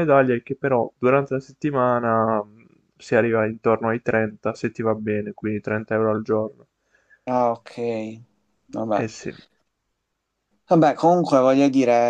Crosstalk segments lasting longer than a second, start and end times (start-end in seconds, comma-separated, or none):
none